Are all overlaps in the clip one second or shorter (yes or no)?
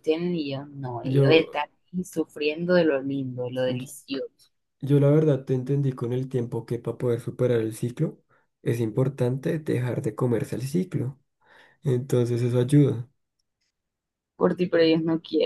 yes